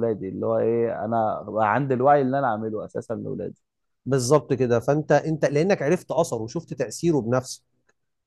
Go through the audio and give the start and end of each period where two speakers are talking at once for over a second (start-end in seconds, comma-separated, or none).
none